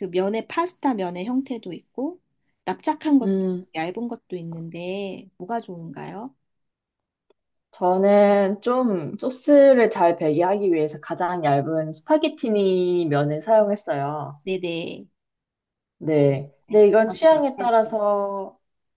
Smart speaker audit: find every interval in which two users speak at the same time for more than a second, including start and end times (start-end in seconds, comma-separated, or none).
16.1-18.0